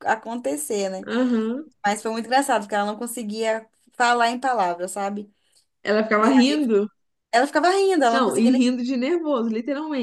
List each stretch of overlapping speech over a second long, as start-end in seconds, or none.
none